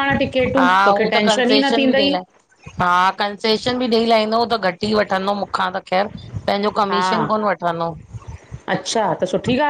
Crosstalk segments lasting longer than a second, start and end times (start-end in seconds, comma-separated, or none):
0.6-2.2